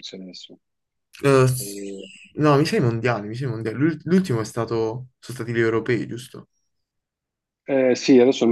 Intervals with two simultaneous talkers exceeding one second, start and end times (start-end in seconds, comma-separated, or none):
none